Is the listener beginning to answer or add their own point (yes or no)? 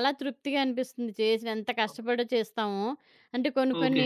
no